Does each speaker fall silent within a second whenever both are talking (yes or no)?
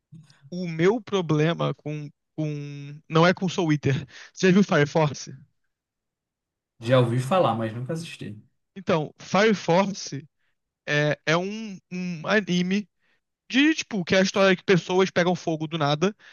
yes